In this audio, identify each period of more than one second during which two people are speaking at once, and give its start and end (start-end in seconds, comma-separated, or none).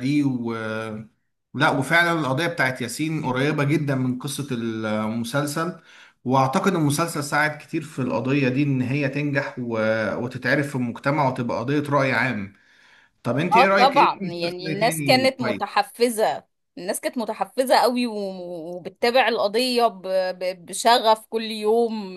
13.5-15.8